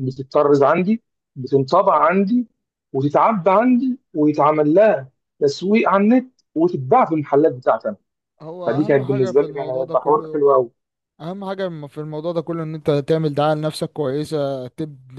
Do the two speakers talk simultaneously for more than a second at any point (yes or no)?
yes